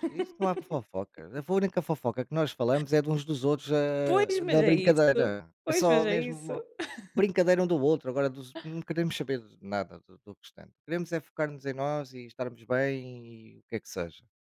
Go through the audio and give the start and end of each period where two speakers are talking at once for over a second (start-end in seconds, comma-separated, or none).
4.0-6.5